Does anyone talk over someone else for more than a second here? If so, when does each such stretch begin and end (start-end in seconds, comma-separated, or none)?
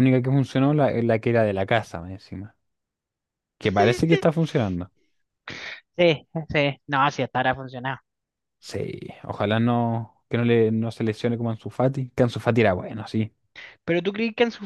none